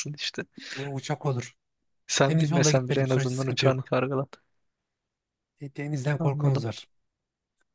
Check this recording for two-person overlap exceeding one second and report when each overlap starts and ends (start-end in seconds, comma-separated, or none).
2.3-3.9